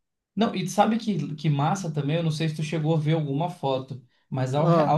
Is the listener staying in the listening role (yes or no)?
yes